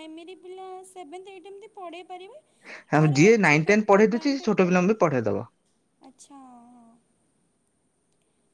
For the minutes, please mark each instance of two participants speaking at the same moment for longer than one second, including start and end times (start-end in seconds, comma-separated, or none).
3.0-5.0